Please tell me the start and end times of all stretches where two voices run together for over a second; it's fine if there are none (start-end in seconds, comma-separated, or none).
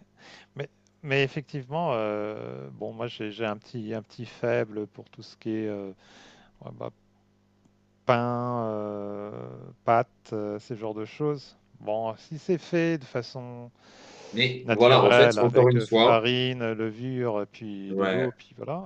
14.6-16.2